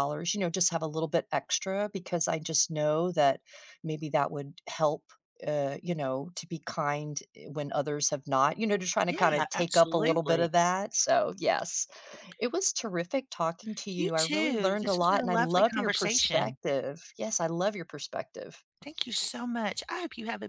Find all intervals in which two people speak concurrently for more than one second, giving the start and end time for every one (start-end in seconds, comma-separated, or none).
9.1-10.5, 14.0-16.6